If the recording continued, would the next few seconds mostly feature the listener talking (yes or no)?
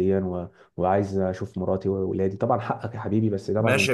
yes